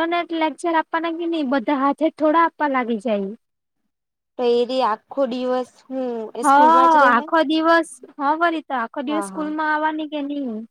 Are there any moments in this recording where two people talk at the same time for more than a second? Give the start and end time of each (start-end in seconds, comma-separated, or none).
none